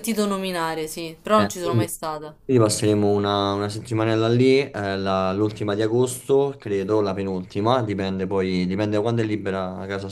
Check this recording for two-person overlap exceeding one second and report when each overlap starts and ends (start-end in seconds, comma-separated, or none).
none